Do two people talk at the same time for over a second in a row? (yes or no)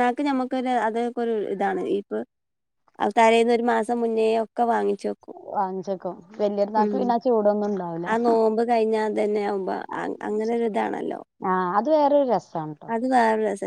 no